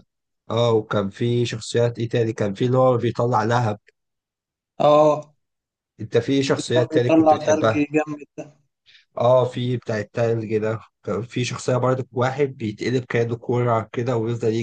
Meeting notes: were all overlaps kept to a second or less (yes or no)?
no